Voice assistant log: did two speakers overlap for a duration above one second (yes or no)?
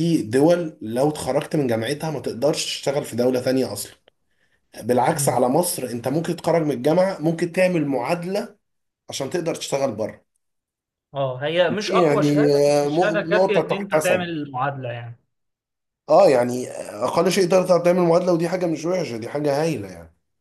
yes